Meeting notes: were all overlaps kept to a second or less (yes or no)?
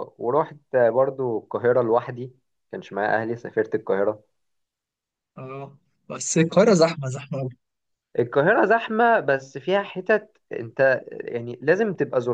yes